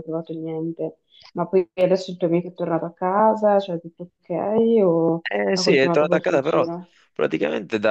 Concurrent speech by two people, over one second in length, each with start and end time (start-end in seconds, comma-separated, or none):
5.3-6.7